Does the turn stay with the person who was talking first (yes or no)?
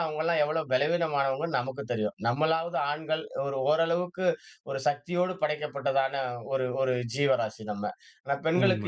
yes